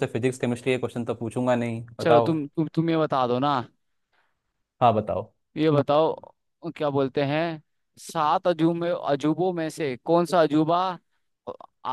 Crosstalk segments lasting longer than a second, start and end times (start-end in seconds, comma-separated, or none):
none